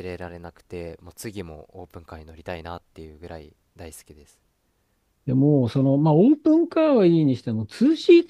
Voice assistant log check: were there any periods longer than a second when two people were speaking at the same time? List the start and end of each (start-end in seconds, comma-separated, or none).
none